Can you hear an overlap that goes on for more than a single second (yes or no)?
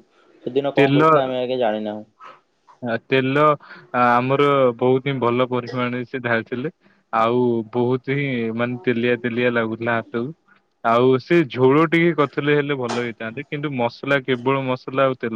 no